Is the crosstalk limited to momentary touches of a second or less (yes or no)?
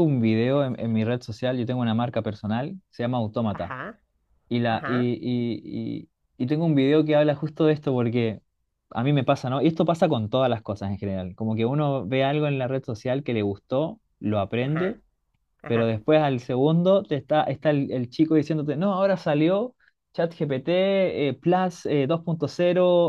yes